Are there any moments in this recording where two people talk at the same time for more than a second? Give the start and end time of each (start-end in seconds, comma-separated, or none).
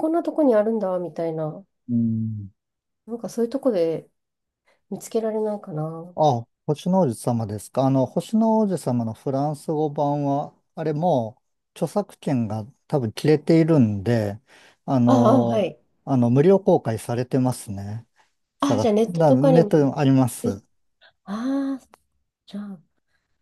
18.6-19.9